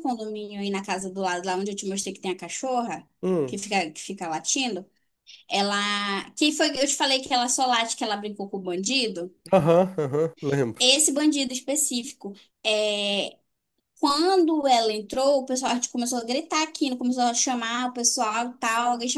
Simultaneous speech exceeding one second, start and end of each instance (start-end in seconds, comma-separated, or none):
none